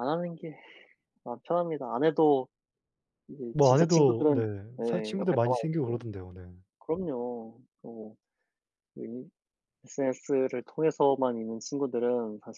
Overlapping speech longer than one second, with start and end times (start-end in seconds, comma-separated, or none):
3.5-6.0